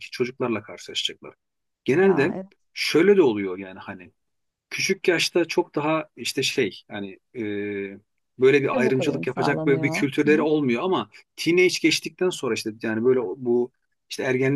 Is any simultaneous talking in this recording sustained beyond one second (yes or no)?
yes